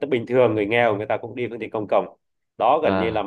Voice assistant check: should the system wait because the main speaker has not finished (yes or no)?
yes